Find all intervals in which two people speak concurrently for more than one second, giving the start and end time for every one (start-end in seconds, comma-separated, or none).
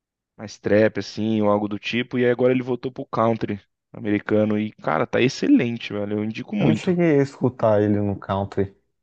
none